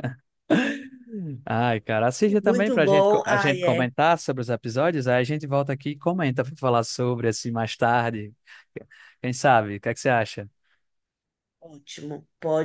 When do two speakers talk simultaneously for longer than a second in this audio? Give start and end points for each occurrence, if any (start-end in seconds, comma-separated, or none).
2.4-3.8